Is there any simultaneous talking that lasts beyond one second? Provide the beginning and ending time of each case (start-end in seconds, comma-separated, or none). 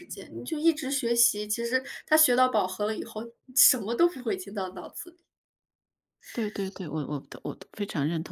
none